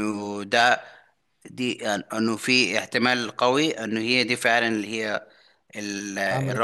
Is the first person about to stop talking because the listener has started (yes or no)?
no